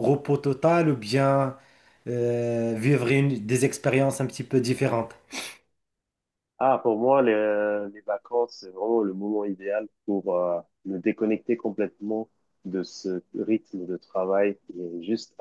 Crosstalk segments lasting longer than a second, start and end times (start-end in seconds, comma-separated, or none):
none